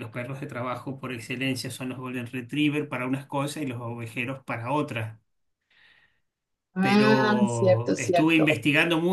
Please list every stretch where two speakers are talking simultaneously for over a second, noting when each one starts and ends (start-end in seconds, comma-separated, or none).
6.8-8.5